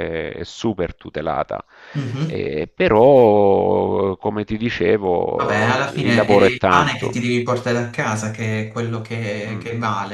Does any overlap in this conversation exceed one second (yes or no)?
yes